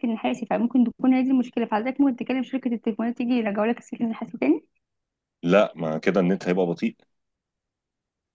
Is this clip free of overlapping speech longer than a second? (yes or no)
yes